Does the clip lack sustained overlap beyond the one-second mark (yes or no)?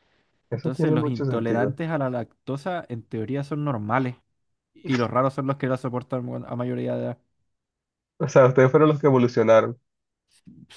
no